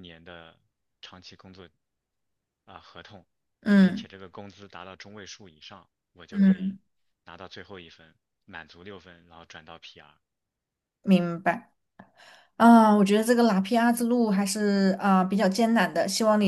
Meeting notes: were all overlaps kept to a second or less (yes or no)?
yes